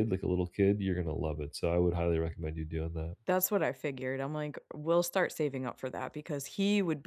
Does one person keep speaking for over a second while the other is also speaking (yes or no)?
no